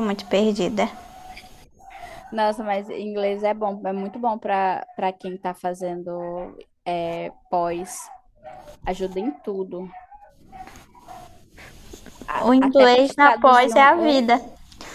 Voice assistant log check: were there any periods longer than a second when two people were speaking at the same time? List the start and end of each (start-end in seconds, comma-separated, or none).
12.3-14.3